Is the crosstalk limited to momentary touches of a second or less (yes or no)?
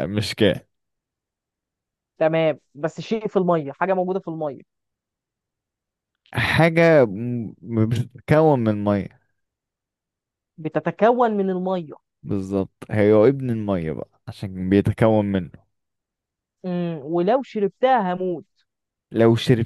yes